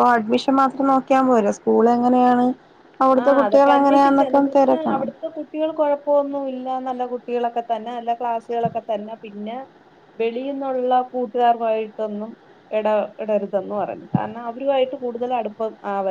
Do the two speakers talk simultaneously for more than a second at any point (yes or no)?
yes